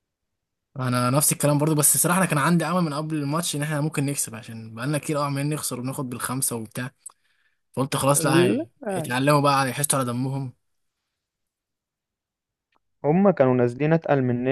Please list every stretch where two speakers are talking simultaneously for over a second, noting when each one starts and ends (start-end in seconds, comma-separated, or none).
none